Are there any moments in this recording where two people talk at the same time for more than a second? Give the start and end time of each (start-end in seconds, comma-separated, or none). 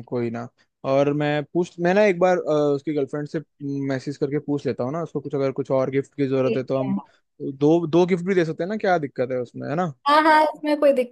none